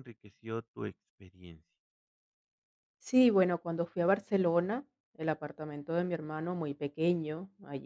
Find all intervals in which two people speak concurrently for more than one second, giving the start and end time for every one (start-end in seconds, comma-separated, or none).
none